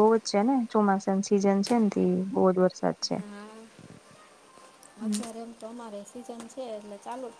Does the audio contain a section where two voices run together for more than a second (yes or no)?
no